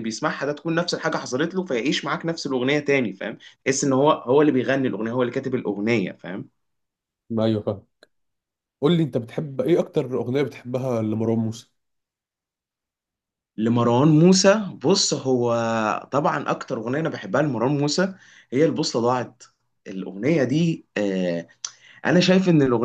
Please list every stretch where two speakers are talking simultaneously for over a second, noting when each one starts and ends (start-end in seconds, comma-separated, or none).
none